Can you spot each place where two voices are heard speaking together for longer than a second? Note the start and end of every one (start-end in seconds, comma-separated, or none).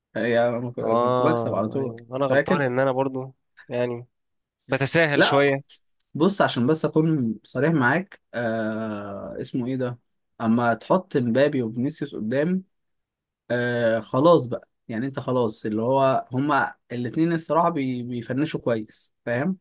0.8-2.6